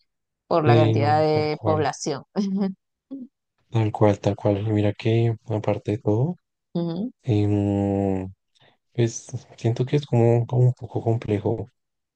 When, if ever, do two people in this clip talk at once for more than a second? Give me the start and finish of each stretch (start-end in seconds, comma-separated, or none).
0.6-1.9